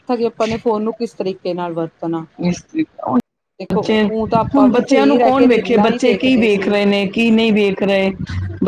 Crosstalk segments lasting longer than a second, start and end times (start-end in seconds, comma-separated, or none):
4.5-6.8